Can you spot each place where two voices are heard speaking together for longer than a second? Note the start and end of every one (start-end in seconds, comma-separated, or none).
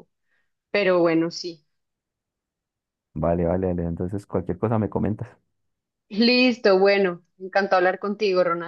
none